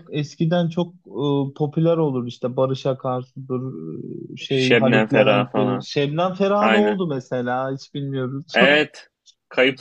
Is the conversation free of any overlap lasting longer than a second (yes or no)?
no